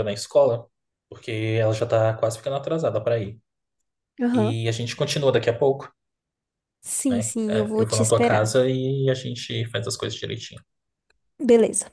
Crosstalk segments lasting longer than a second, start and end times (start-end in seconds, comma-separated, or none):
7.1-8.5